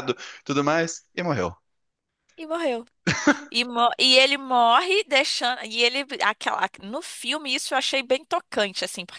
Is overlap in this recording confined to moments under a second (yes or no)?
yes